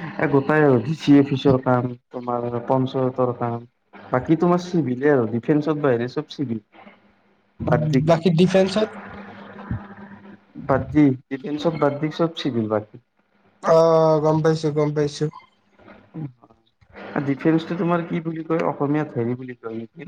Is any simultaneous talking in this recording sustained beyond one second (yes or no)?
no